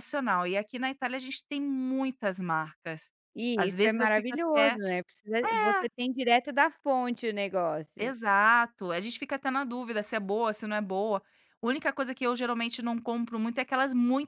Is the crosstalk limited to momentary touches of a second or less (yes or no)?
no